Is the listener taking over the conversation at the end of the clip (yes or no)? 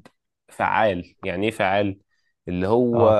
no